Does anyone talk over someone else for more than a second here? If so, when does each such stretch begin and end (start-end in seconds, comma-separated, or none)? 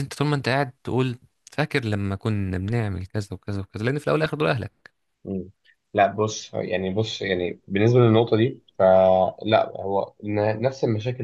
none